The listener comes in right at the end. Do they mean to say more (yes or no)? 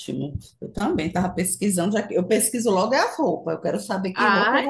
yes